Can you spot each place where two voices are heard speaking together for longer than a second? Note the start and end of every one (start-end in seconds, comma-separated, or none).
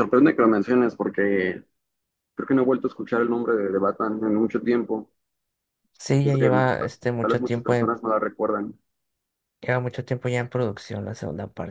6.2-7.9